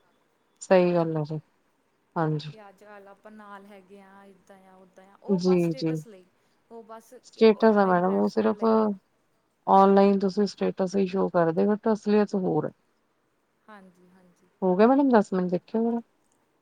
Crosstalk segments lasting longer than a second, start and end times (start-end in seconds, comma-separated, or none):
7.2-8.6